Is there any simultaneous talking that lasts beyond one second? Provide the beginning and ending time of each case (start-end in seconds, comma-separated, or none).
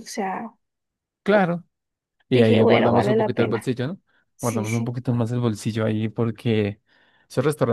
2.3-3.7